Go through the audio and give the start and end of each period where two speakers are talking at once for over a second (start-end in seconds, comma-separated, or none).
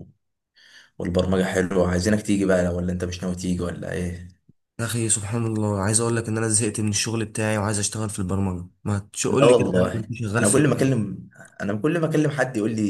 9.3-11.0